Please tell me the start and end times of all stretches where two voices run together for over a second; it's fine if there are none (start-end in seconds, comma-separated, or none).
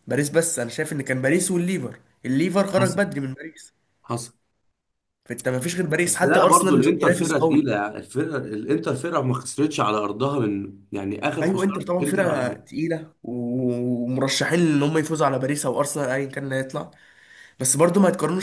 6.1-7.6, 11.4-12.8